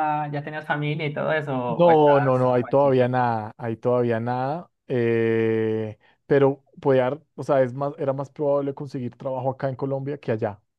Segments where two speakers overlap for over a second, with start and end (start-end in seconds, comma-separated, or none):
1.7-3.1